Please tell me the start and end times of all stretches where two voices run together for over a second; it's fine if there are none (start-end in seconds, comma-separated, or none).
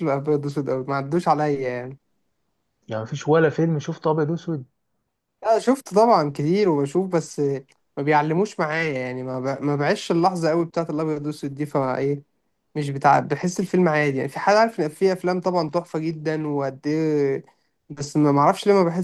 none